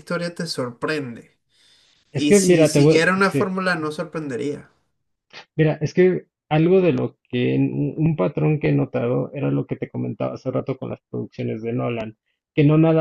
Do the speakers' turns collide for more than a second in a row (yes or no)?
yes